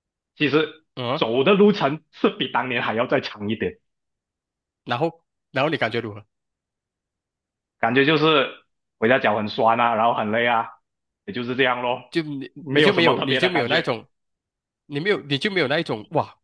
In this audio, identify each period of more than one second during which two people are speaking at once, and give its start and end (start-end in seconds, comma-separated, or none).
12.6-13.9